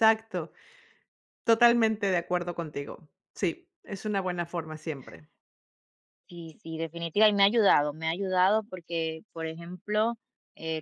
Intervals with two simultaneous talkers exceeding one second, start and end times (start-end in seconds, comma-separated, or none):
none